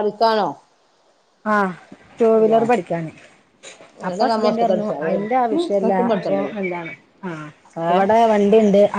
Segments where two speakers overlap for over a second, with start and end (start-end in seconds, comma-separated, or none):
4.1-6.5